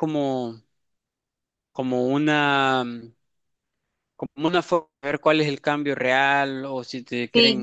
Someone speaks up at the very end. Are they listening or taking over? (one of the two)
taking over